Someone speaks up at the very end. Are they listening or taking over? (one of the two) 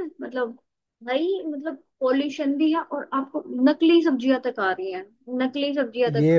taking over